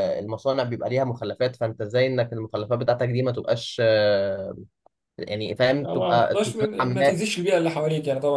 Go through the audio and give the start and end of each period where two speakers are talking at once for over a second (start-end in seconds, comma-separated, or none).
5.8-7.2